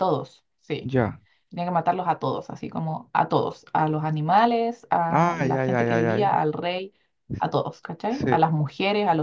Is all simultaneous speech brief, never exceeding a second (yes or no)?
no